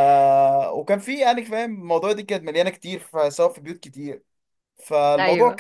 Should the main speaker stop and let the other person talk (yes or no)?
no